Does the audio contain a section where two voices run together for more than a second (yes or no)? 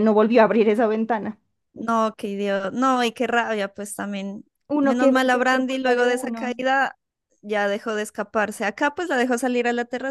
yes